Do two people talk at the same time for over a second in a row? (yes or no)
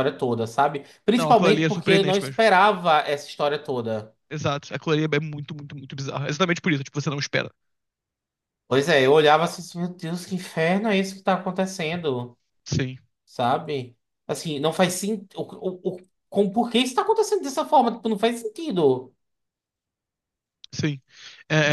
yes